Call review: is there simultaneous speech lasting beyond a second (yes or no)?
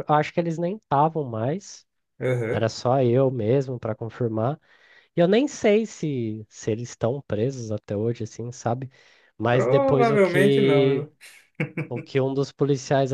yes